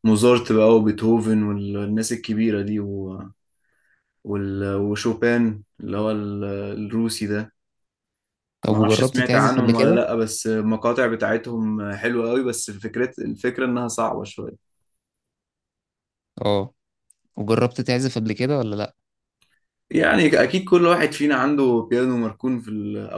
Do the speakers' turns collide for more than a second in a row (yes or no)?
yes